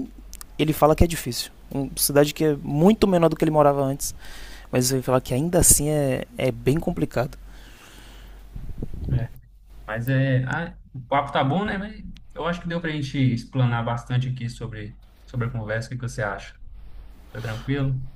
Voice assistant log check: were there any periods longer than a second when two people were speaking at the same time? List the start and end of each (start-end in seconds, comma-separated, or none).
none